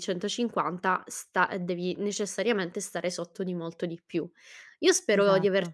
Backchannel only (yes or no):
yes